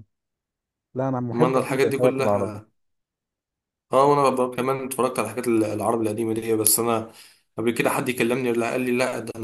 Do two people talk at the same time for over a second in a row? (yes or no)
yes